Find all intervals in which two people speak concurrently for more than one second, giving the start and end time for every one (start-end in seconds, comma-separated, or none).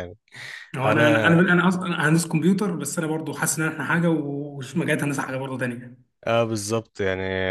none